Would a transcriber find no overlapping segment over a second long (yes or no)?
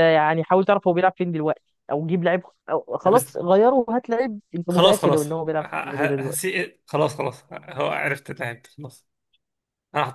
no